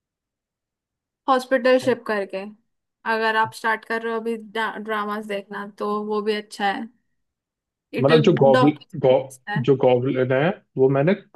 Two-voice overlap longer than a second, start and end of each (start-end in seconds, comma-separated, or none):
8.0-9.6